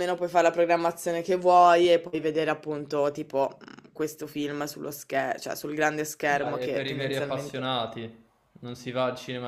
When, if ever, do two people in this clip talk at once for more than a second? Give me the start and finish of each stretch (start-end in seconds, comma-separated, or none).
6.3-7.6